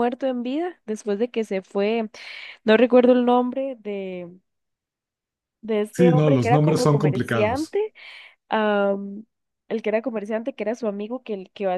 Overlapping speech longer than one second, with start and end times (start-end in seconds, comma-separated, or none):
5.9-7.8